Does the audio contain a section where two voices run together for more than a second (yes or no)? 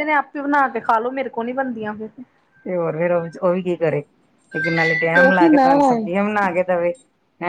no